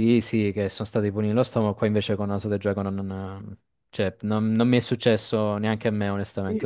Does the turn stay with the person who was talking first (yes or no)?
no